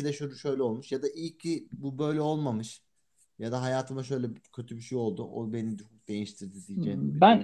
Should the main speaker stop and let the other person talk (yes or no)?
yes